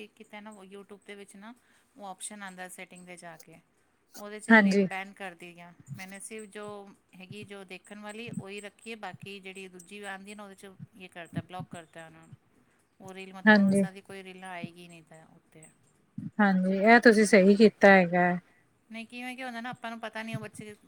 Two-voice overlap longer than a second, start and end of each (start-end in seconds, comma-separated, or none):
none